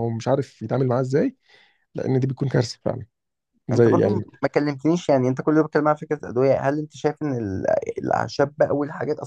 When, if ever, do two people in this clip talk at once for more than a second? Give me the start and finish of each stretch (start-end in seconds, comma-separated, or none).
none